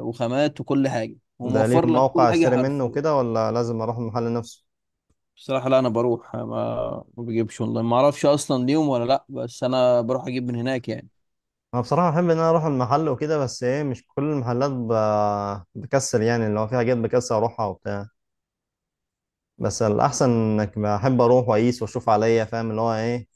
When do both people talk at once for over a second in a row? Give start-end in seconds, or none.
1.4-3.0